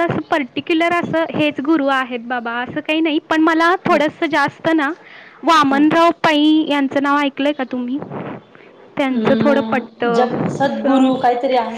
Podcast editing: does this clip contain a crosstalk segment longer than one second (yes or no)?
yes